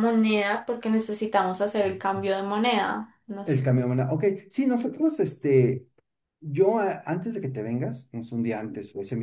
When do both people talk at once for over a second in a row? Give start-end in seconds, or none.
none